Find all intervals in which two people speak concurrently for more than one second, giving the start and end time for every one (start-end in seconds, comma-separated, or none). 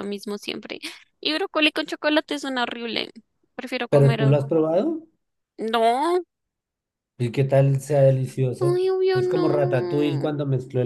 8.6-10.3